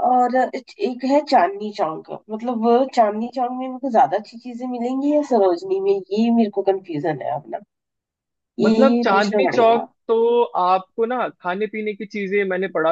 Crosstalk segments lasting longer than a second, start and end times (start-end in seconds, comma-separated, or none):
8.6-9.9